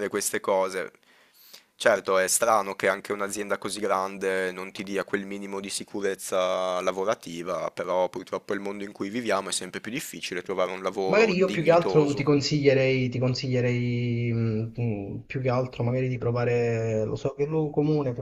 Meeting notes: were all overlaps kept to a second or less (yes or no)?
no